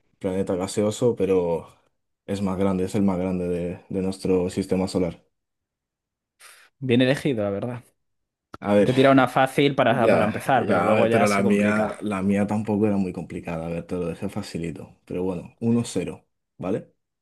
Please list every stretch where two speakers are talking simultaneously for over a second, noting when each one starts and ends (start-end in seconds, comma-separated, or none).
9.9-11.9